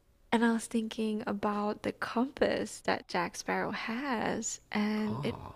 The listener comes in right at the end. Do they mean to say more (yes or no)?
no